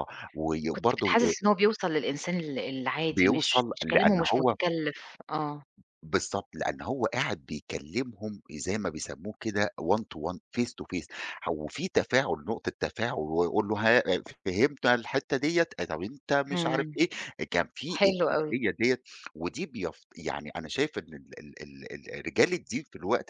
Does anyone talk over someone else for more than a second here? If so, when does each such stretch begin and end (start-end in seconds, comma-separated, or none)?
3.1-4.5